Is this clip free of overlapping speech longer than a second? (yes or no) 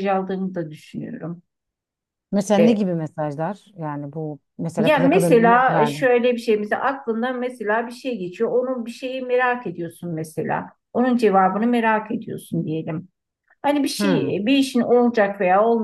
no